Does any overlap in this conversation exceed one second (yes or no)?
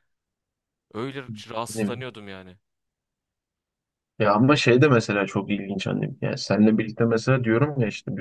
no